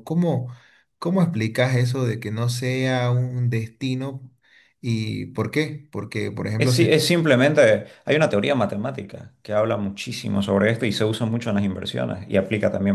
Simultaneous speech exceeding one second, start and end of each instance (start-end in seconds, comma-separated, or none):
none